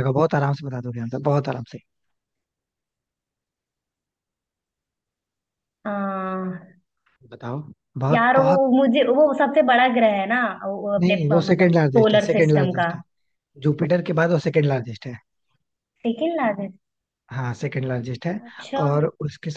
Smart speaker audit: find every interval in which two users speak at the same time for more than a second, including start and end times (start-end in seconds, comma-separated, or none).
11.0-12.9